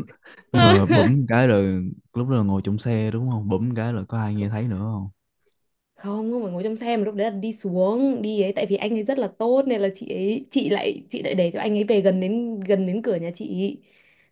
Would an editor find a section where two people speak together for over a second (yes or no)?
no